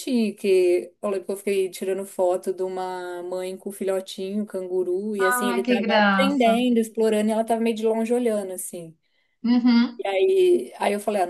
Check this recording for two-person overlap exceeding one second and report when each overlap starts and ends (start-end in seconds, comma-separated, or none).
5.2-6.6